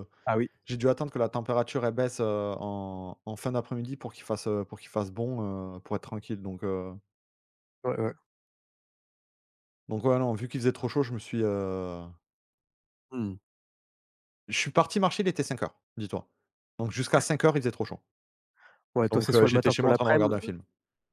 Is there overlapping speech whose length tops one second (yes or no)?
yes